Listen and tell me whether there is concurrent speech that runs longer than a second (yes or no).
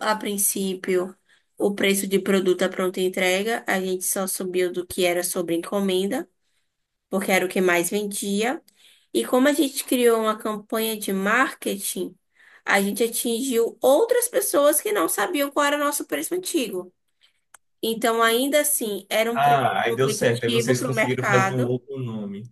yes